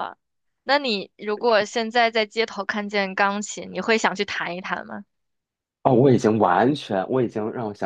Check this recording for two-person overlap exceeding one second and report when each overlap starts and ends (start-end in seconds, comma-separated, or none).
none